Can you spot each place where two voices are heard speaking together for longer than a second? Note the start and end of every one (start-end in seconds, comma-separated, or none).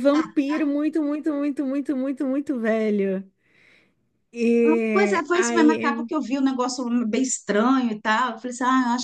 4.6-6.1